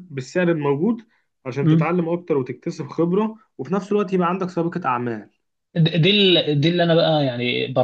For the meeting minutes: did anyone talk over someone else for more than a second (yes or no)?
no